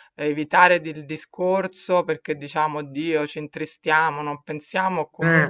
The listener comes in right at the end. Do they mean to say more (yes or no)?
no